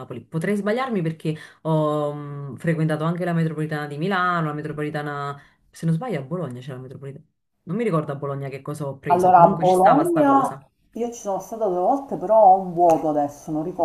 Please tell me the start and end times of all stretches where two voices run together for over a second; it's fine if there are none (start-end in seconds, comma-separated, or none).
9.1-10.6